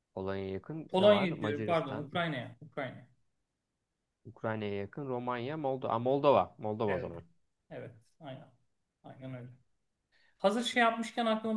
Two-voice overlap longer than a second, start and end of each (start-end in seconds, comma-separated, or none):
0.9-2.1